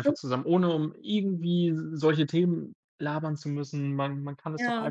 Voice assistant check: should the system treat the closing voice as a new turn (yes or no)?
no